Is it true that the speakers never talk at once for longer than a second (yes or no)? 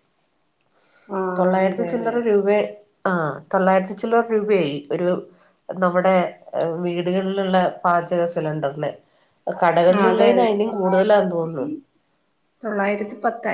no